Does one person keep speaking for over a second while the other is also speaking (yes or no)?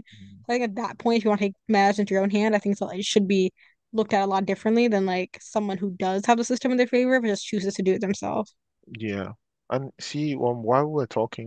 no